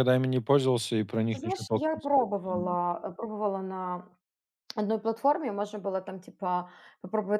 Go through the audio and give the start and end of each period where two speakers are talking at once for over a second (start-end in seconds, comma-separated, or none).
1.3-2.8